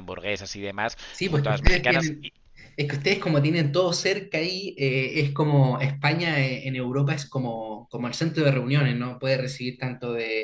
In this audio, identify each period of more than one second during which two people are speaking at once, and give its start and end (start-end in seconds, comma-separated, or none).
1.1-2.3